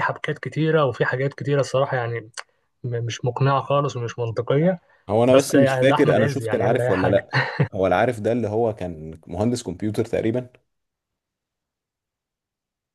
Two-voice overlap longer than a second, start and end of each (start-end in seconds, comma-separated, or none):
5.3-7.3